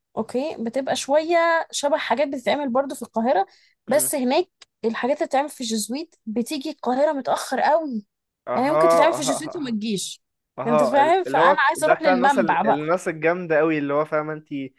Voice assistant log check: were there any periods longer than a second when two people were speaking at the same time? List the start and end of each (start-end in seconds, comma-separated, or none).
8.5-9.8, 10.7-12.9